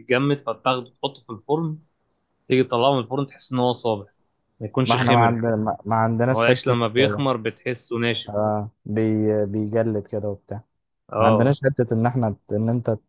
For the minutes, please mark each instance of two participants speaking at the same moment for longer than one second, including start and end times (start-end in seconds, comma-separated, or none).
none